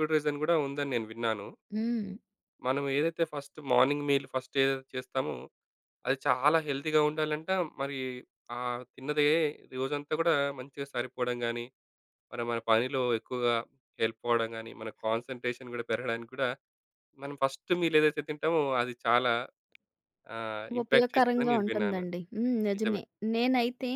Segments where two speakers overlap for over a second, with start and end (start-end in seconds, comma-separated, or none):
20.8-22.0